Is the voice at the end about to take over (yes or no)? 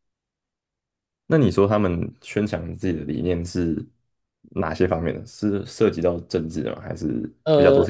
yes